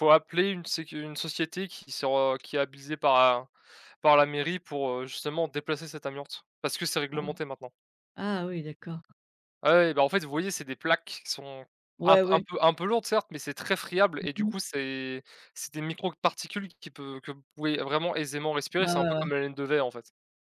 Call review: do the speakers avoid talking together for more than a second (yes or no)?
yes